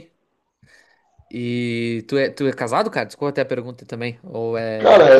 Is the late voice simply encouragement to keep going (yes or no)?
no